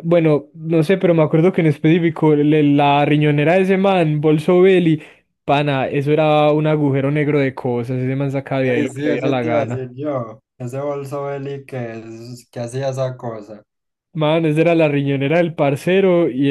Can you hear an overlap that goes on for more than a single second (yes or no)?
yes